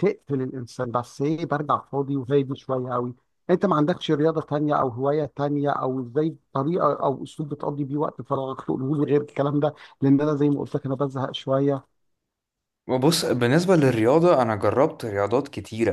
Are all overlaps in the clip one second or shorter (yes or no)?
yes